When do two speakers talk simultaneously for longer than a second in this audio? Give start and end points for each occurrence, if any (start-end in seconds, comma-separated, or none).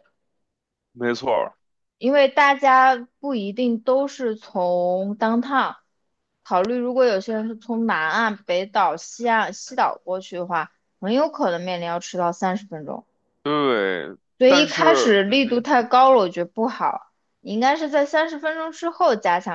14.4-15.7